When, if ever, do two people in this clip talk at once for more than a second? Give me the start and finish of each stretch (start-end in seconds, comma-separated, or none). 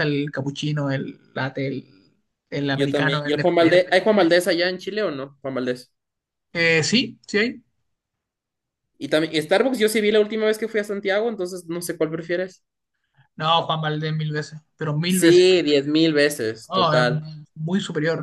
2.7-4.3